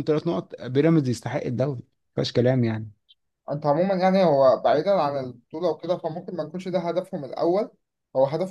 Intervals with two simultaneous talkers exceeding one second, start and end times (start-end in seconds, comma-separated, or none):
none